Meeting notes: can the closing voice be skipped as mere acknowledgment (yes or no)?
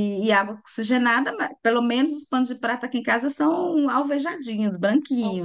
no